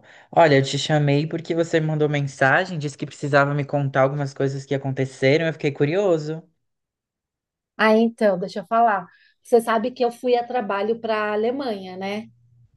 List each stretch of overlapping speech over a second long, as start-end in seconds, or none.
none